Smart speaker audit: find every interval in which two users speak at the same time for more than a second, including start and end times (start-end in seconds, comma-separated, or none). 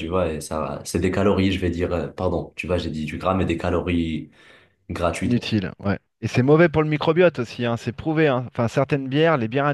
none